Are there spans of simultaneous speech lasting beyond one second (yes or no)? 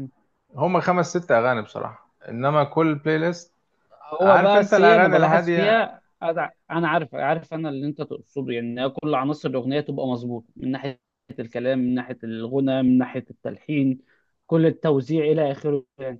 yes